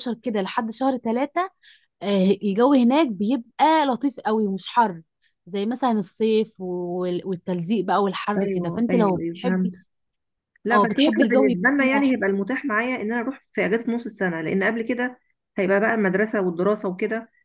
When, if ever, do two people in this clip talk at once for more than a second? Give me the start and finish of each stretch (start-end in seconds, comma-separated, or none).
8.4-9.7, 10.7-12.3